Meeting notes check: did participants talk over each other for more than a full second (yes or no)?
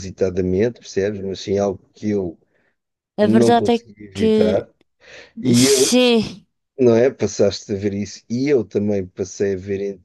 yes